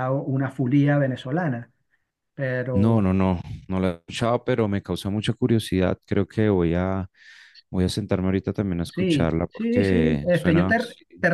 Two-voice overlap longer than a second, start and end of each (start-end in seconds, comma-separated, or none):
8.8-10.8